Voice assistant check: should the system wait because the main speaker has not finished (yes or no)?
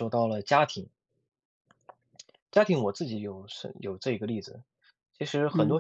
yes